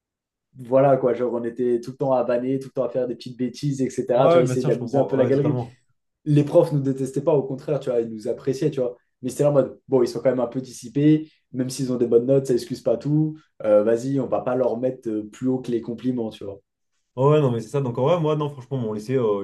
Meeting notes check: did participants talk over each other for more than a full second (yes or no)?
yes